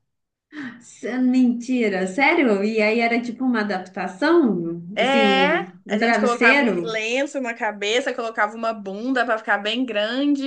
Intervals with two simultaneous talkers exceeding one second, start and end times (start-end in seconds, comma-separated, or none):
4.9-7.0